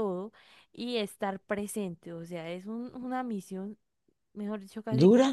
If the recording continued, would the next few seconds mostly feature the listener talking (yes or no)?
no